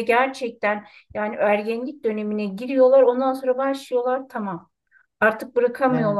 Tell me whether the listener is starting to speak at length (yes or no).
no